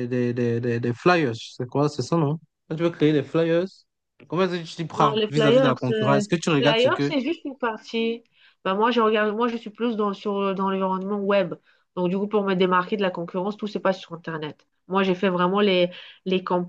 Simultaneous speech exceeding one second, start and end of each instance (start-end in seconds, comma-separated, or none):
5.0-7.1